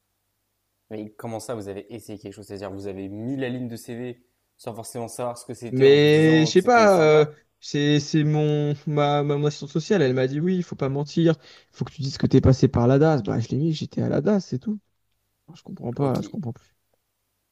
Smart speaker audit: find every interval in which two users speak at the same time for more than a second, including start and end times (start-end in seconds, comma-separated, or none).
5.7-7.4